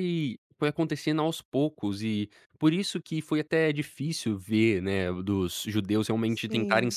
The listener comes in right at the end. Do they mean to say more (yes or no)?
no